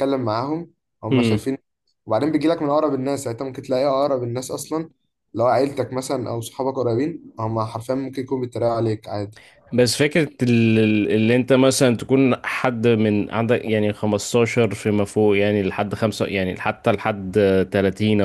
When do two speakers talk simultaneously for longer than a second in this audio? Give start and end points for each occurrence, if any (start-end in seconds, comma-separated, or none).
none